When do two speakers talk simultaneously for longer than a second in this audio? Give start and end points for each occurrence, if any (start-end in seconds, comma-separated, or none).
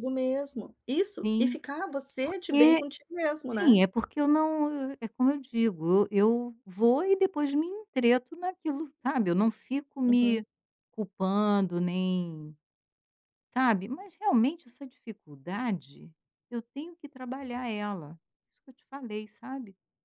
none